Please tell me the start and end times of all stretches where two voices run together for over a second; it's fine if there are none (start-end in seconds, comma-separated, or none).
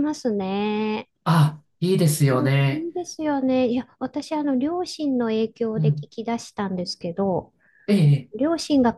none